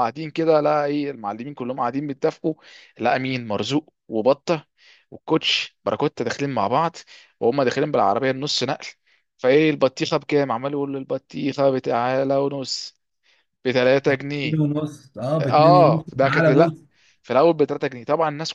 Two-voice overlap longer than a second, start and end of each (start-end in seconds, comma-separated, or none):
15.4-16.8